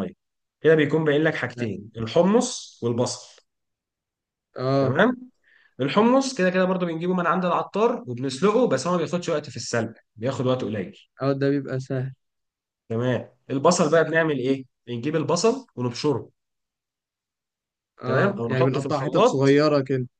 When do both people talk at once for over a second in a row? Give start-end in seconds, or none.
18.0-19.6